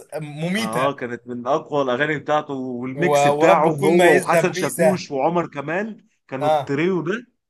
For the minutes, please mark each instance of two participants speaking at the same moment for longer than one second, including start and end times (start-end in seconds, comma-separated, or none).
3.1-5.0